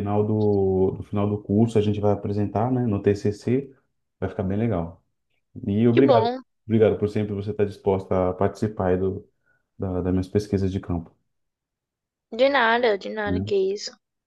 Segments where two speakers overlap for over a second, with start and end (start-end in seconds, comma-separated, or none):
none